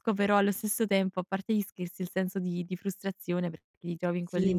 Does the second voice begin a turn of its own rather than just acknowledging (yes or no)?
no